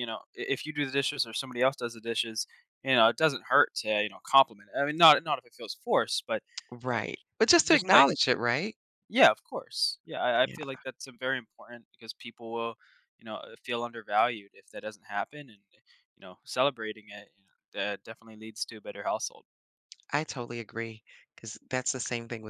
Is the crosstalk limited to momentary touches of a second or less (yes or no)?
yes